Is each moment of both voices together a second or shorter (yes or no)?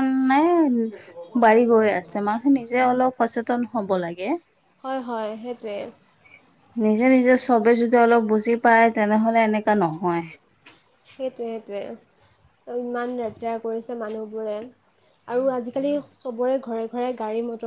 yes